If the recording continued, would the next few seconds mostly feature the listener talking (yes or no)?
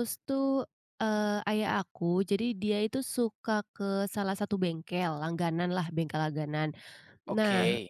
no